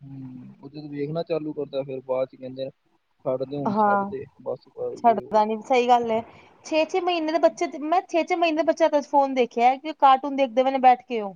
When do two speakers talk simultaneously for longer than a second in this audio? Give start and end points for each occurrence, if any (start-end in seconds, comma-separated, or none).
none